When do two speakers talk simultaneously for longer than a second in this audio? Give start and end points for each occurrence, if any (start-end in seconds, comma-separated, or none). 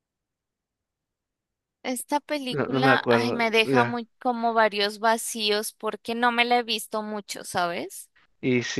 2.5-4.0